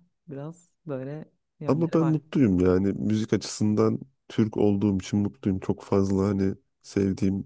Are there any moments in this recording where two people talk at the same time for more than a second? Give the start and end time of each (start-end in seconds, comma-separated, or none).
none